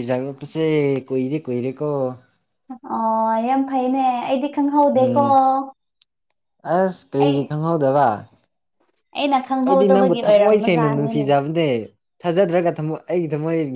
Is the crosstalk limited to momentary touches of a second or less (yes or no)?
no